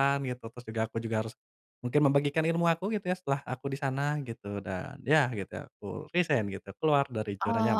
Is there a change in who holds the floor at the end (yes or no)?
yes